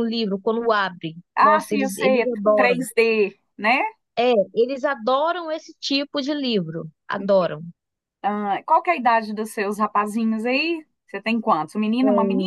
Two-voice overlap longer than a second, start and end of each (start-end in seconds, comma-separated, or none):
1.4-2.8